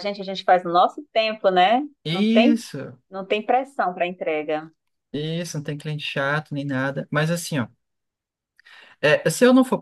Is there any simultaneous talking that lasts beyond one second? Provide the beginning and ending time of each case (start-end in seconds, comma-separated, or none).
none